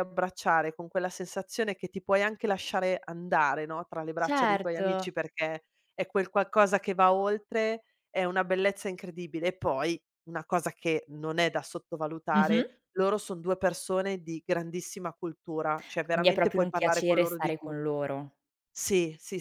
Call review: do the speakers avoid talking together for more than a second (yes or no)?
no